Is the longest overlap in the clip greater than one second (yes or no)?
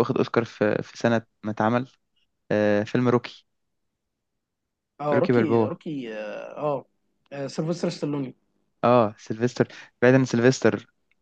no